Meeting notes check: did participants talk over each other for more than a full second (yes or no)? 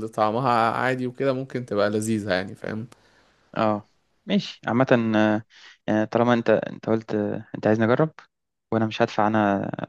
no